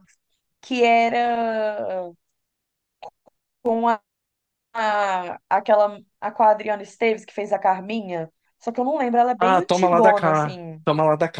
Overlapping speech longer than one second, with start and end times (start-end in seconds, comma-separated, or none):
9.4-10.8